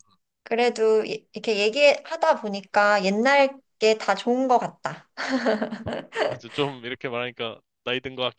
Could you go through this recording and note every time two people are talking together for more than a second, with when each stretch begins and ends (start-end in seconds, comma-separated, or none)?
none